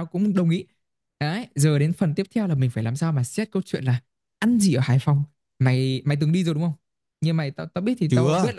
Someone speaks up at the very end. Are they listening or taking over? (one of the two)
listening